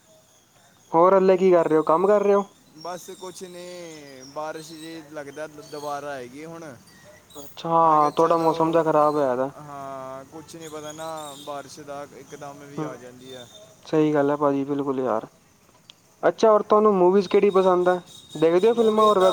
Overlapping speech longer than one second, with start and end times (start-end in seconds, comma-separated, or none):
none